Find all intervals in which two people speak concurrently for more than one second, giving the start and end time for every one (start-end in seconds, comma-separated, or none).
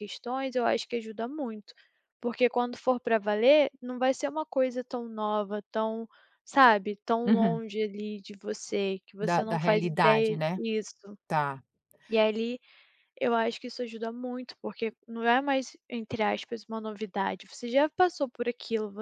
9.2-10.6